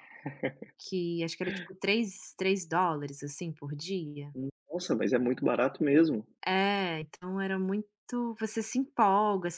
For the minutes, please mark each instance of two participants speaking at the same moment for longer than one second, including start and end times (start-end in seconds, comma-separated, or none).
none